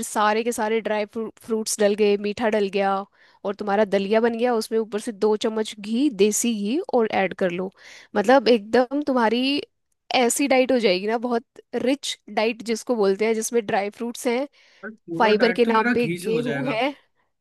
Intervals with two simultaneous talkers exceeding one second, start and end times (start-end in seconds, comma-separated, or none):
15.2-16.8